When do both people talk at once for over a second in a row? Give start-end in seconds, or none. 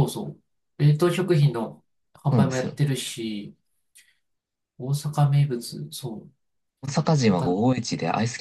none